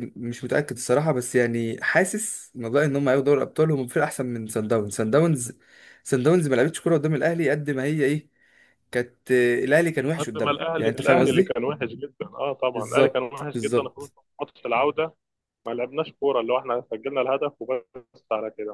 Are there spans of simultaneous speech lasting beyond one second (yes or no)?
yes